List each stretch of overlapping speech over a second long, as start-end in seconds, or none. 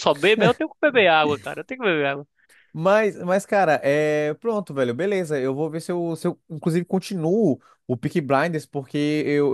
none